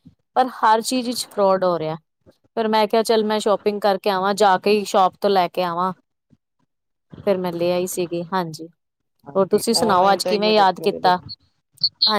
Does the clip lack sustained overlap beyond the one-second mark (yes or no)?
no